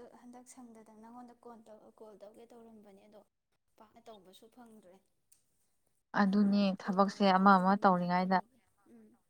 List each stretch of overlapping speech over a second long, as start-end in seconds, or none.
6.2-8.4